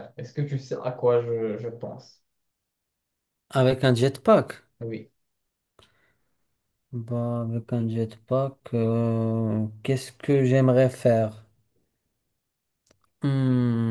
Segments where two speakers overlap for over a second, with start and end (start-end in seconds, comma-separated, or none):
none